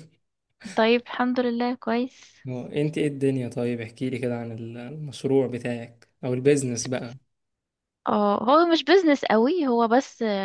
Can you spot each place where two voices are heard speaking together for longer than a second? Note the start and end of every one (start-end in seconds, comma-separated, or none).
none